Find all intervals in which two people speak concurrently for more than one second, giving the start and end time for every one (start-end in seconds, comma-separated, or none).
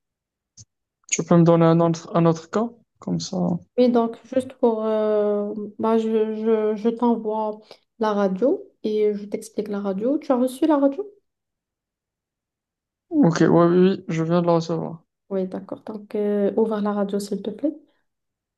none